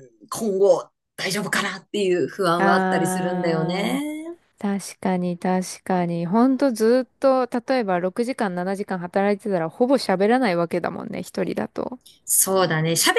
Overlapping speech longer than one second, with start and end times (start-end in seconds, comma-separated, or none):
2.6-4.0